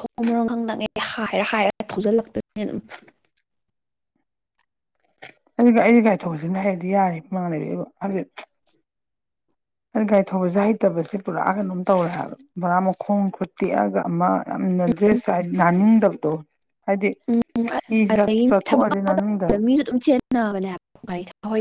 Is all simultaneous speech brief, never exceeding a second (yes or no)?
no